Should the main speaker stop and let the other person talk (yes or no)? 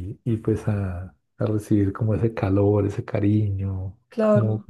no